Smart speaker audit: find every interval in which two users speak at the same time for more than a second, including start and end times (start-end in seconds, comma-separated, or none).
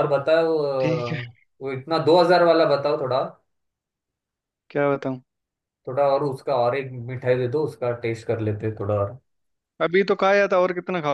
none